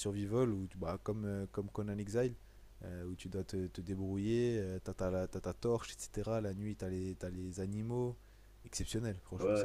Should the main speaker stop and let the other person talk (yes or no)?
yes